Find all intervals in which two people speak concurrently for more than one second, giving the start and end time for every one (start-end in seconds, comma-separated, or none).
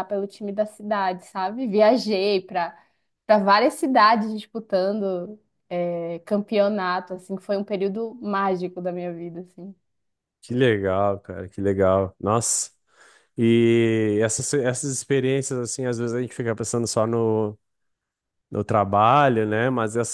none